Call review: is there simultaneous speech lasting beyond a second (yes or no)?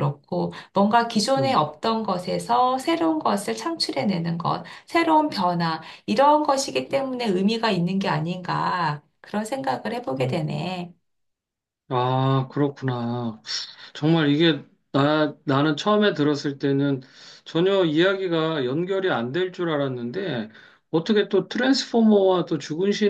no